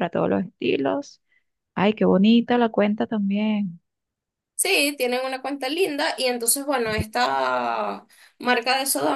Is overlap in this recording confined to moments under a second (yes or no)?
yes